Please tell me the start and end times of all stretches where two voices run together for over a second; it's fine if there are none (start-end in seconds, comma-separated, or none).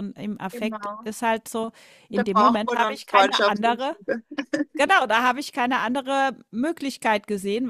2.1-3.9